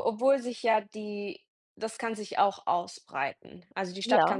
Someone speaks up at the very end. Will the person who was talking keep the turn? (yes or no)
yes